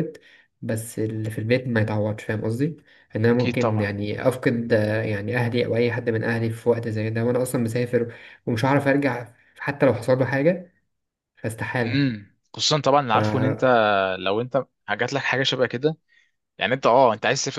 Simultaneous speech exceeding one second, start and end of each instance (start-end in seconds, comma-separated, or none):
none